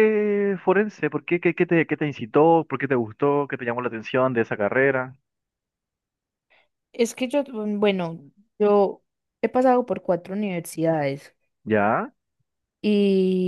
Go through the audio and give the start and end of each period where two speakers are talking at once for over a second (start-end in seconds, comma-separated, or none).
none